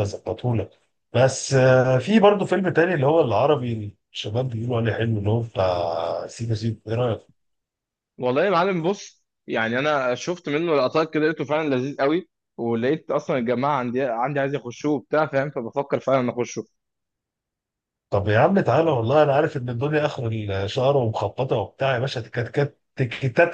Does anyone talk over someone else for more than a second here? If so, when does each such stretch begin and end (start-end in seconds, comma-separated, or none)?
none